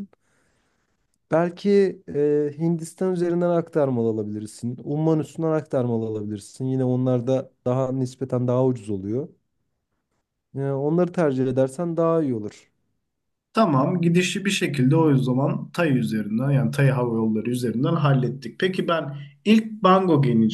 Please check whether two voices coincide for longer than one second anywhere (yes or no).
no